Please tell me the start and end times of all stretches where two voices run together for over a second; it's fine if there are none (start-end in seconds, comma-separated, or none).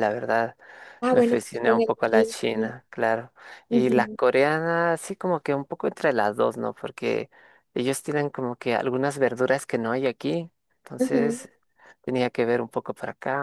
1.1-2.8